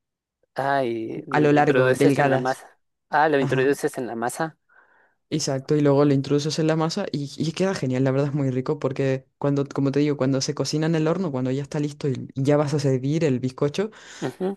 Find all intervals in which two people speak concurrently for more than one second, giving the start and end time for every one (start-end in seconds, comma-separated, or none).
1.3-2.6